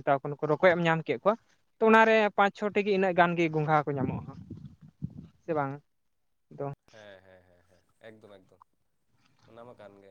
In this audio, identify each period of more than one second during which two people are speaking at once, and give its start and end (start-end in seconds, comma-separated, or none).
none